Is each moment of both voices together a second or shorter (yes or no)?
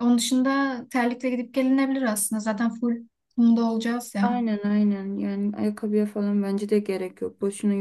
yes